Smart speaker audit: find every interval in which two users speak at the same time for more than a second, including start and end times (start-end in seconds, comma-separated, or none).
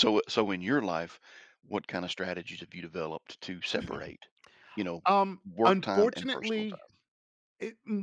5.5-6.8